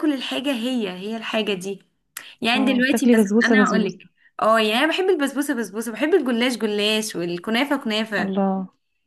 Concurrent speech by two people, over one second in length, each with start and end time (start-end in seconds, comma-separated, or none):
2.5-4.1